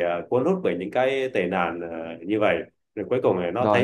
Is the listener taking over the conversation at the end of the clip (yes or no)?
yes